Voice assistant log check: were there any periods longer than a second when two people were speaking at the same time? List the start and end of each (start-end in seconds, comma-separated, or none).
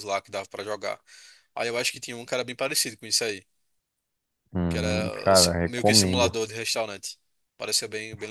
4.7-6.3